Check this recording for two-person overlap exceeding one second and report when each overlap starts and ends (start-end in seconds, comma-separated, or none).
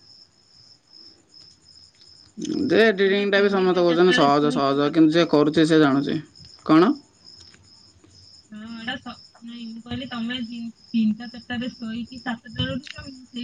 3.1-5.2